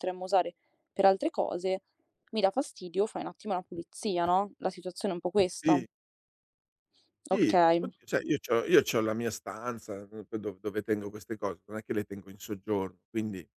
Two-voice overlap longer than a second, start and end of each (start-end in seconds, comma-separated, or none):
none